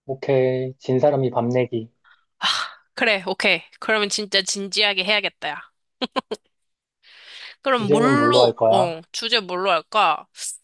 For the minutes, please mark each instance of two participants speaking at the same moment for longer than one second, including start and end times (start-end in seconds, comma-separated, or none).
7.7-8.9